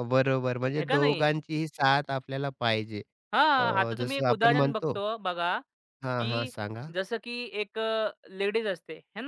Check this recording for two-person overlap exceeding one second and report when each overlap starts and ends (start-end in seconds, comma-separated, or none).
3.6-5.0